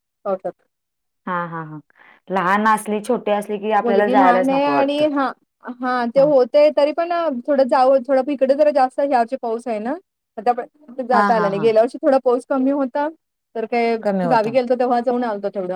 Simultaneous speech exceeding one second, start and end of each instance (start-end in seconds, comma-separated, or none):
3.8-5.0